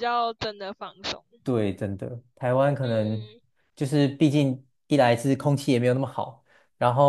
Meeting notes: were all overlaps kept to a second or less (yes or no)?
yes